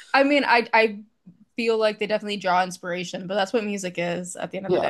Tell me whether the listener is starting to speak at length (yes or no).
yes